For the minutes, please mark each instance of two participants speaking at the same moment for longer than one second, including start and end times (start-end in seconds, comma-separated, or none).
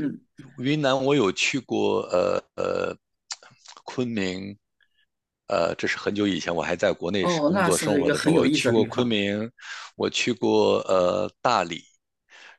7.2-9.2